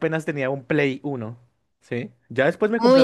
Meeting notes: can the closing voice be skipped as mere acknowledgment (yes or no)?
no